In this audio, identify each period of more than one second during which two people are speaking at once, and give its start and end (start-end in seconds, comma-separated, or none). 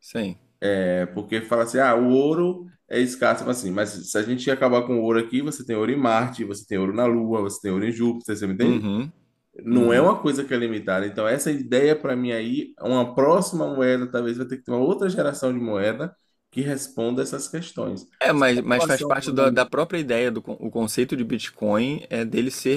18.2-19.5